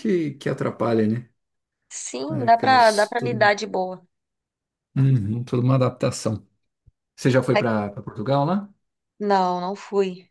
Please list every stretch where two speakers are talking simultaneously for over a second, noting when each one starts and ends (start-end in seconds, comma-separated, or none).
2.3-3.5